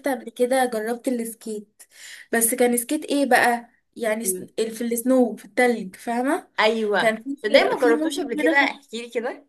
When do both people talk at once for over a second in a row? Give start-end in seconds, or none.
7.0-8.7